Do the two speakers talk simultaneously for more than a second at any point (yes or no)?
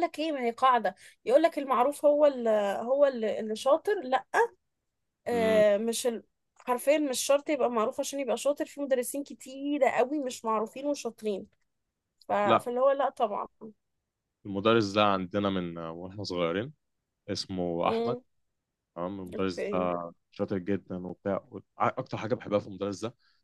no